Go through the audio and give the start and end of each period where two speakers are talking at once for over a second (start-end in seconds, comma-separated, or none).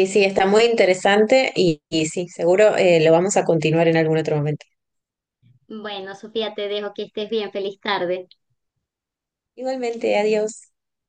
none